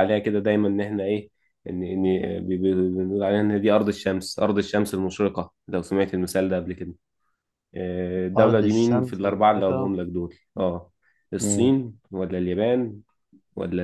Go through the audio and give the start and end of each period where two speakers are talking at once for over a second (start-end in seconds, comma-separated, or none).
8.3-9.9